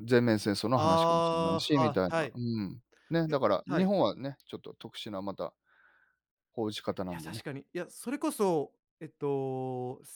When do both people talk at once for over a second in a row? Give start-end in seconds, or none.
0.7-2.3